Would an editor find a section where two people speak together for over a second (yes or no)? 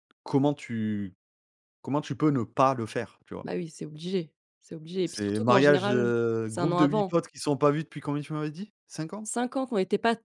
yes